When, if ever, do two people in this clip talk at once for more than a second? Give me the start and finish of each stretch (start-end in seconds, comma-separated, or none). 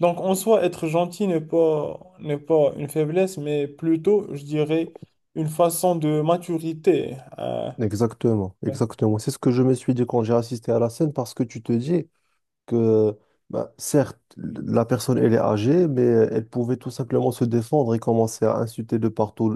none